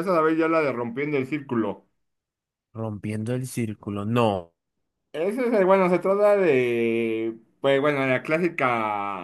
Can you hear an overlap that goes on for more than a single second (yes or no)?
no